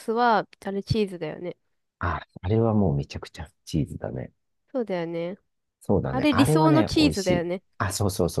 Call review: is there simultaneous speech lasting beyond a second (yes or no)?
yes